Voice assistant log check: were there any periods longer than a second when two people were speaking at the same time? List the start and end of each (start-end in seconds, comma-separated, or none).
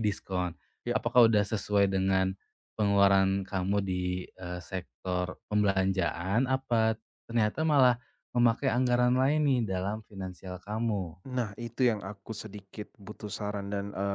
none